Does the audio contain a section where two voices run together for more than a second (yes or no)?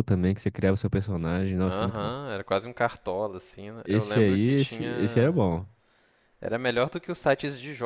yes